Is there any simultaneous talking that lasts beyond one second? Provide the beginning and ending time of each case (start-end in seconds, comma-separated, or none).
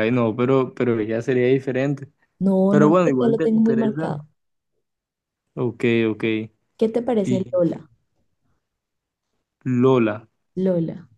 2.7-4.2